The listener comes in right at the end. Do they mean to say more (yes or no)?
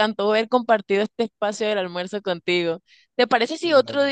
no